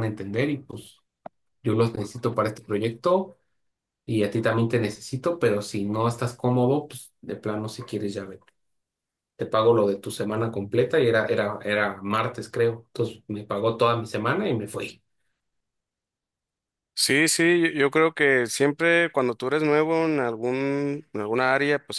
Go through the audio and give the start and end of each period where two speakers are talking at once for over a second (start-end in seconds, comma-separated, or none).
none